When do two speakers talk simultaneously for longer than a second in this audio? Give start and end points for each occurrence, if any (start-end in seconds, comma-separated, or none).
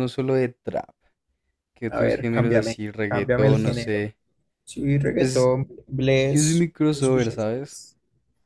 1.9-4.0, 6.3-7.8